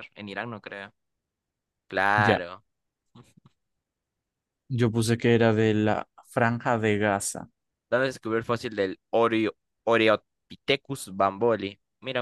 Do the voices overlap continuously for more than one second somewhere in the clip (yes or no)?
no